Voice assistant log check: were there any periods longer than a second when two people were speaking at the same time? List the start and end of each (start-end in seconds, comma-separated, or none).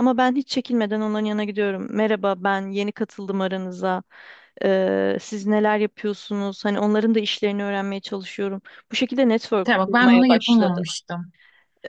9.6-10.8